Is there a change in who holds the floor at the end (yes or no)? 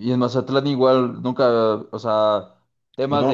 no